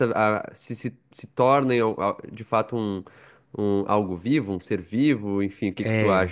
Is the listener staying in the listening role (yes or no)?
no